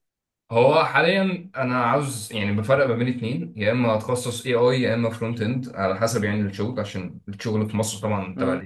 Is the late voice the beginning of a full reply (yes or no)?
no